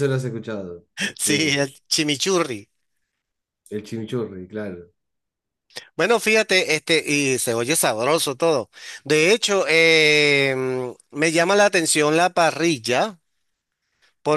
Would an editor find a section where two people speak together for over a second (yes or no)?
no